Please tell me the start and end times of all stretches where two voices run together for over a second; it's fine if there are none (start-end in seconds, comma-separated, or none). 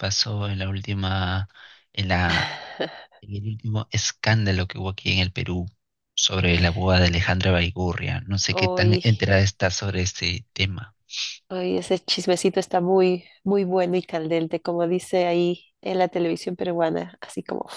none